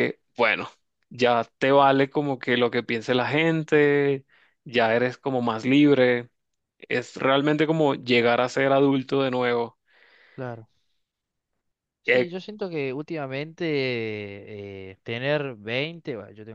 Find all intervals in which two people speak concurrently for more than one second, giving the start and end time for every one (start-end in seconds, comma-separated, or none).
none